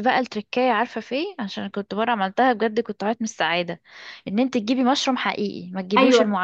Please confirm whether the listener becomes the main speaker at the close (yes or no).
yes